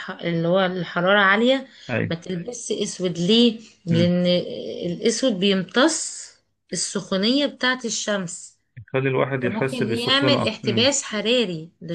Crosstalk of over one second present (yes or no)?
yes